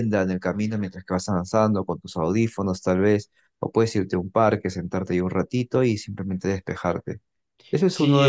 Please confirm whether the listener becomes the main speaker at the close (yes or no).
yes